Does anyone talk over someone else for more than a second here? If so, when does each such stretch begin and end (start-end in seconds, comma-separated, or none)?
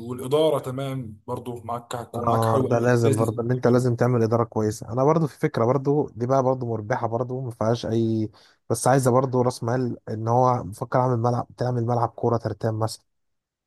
2.1-3.3